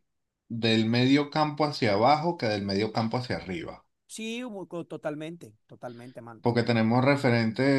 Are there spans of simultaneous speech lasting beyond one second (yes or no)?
no